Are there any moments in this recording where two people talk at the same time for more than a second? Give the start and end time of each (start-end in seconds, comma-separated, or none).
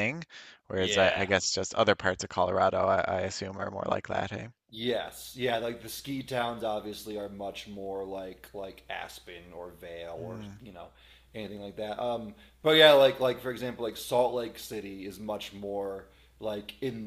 none